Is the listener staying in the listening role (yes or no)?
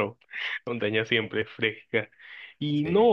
yes